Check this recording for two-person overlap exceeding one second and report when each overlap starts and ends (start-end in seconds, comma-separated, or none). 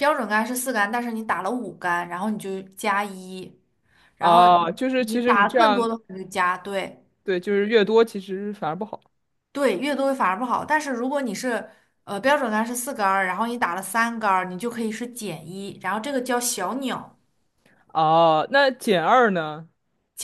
4.2-5.9